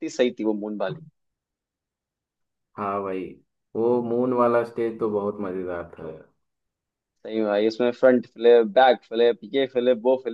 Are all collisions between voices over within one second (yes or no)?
yes